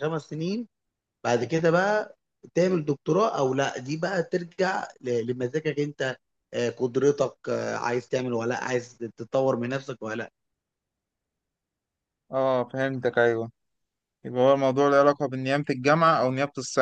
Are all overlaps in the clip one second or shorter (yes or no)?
yes